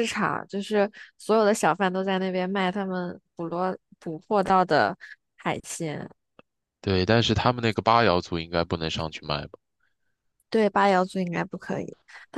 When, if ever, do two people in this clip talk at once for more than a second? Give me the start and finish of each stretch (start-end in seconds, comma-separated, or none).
none